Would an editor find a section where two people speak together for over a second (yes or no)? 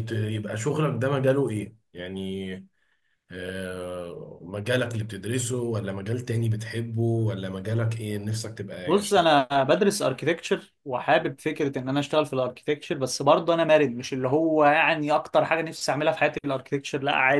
no